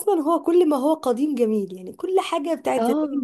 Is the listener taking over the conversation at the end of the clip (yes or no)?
no